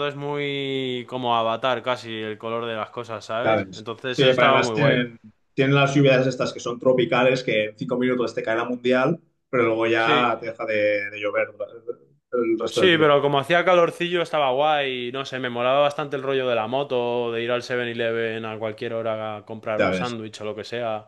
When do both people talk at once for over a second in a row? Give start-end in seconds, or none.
3.4-5.0